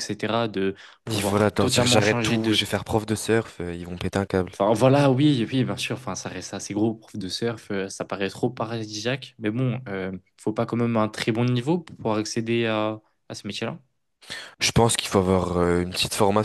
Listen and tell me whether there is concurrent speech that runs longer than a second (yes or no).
yes